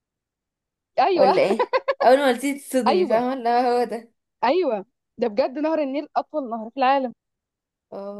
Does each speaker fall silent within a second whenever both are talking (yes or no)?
yes